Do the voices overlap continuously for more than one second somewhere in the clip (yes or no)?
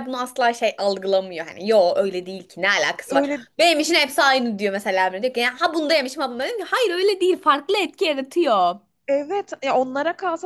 no